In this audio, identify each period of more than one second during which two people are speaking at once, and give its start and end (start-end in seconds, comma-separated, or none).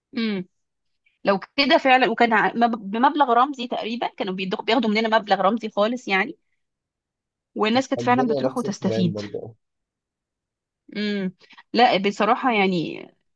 8.0-9.2